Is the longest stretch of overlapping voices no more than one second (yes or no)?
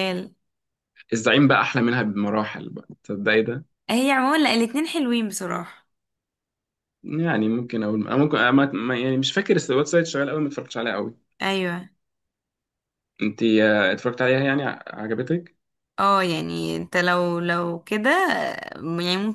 yes